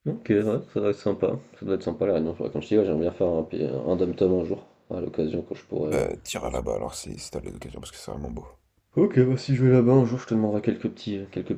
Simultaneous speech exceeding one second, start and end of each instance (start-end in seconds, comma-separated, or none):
none